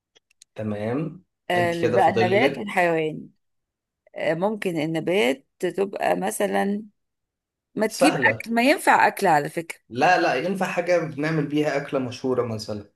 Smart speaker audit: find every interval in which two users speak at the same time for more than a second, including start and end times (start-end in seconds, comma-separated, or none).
1.5-3.0